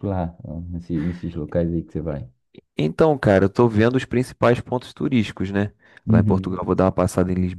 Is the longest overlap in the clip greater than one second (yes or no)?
no